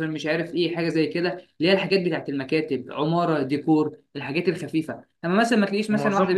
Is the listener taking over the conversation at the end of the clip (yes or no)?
no